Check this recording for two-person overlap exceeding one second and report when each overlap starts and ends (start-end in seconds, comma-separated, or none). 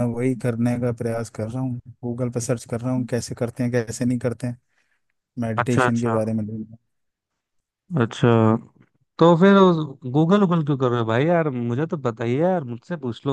none